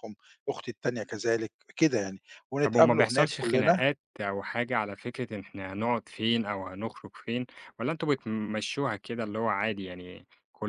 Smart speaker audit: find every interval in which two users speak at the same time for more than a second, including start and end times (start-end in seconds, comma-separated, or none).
2.6-3.8